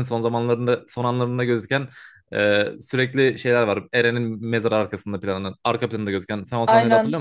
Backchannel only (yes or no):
no